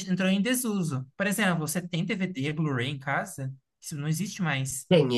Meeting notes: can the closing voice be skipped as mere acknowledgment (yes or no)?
no